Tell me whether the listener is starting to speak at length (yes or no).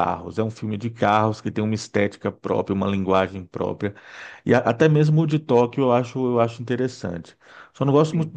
no